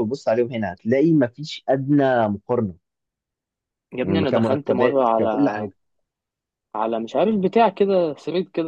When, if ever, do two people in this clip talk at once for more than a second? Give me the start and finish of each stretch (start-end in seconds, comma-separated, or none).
4.0-5.7